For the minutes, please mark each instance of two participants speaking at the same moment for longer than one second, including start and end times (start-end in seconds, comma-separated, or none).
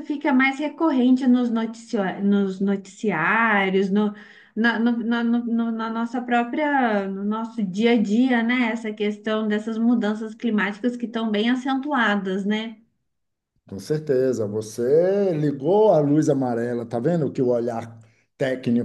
none